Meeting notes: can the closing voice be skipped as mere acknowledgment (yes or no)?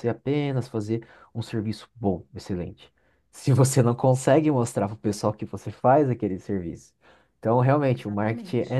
yes